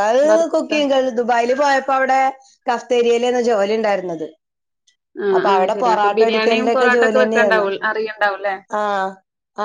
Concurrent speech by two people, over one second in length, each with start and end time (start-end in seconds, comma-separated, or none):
5.4-7.7